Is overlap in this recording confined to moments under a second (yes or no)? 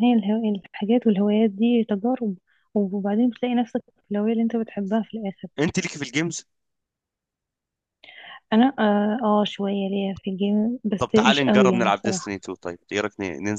no